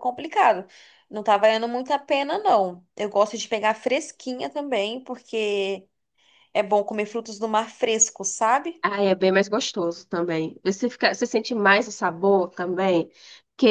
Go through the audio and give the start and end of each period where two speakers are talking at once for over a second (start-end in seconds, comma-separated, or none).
none